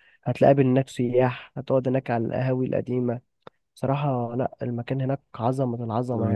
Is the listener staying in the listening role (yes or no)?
no